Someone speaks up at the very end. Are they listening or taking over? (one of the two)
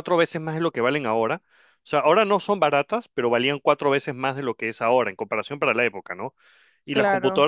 listening